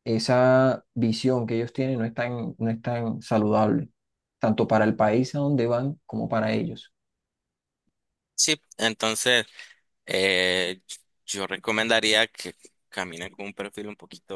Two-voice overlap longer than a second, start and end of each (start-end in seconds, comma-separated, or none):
none